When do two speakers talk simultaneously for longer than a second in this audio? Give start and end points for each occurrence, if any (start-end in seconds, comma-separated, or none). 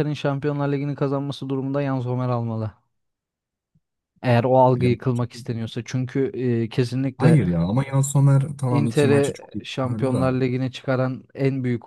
8.7-10.4